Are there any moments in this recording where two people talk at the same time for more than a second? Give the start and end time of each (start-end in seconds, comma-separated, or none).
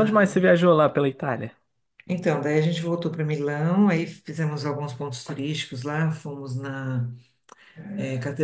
none